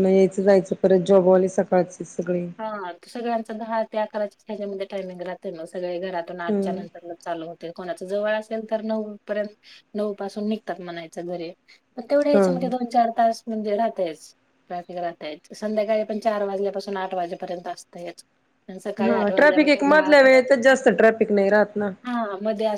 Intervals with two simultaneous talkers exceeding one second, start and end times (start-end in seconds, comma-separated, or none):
19.0-20.8